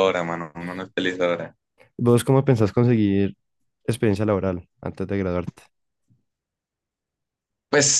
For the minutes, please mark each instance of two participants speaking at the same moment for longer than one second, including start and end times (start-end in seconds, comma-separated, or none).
none